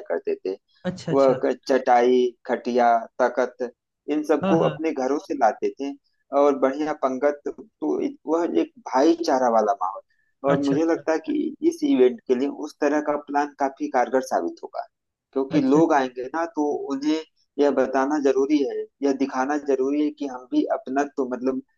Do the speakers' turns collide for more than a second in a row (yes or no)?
no